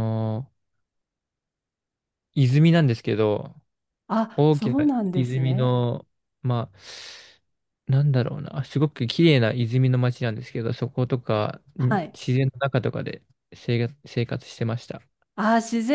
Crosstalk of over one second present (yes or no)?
yes